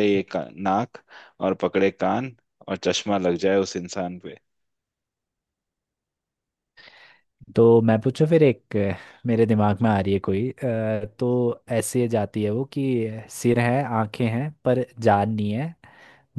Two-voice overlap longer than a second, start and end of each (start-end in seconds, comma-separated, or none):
none